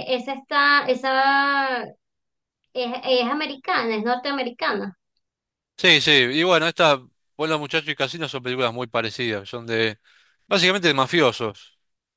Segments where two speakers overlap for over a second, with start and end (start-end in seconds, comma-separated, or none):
none